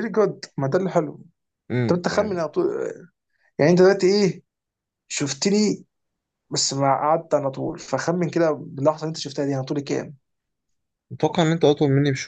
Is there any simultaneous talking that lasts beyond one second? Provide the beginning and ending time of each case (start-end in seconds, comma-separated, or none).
none